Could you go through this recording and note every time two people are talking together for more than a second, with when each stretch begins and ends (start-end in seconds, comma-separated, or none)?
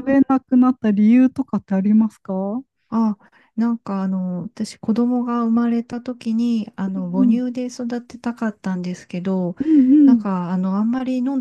none